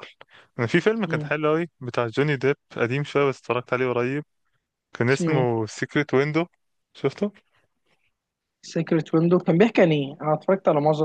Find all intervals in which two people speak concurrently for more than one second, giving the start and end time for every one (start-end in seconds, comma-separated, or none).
none